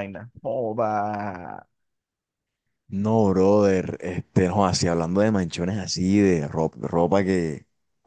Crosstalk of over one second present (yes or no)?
no